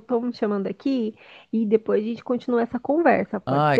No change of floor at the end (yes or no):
no